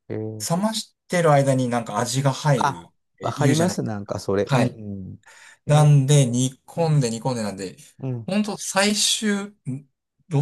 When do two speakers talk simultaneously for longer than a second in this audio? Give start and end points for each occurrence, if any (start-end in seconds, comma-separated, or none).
2.6-4.8